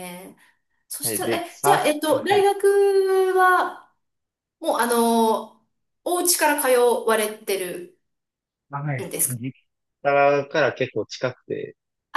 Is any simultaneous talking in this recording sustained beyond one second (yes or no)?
yes